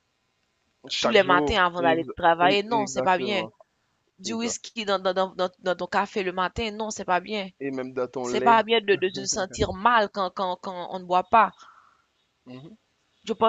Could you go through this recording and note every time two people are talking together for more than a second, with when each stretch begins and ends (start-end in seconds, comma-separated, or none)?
1.0-3.4